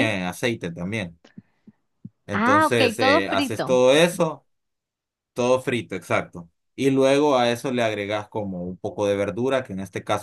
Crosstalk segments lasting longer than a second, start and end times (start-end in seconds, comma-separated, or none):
2.3-3.9